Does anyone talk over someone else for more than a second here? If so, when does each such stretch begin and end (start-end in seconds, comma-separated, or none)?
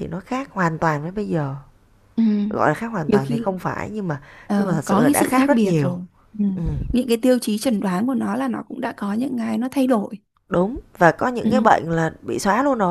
4.6-6.0